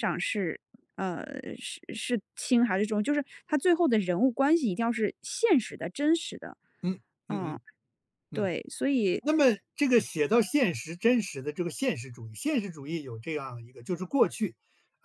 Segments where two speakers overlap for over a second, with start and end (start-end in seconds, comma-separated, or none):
none